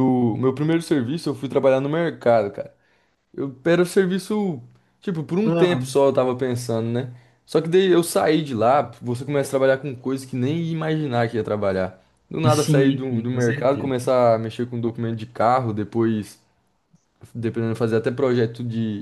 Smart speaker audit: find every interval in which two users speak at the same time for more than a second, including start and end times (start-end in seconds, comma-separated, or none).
12.5-13.9